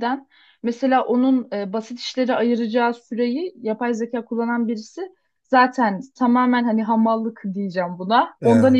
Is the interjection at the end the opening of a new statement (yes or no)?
no